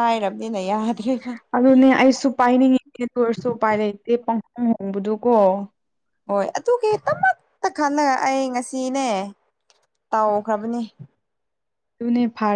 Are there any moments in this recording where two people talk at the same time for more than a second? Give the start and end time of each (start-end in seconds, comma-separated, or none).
none